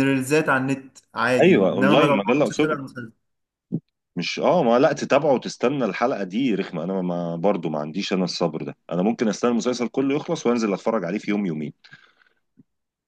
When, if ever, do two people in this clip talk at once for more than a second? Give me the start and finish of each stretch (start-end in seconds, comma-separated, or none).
1.4-2.8